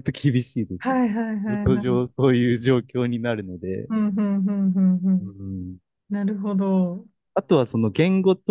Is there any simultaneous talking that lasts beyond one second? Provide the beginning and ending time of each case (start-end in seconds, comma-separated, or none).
none